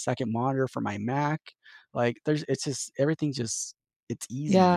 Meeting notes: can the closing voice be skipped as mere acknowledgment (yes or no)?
no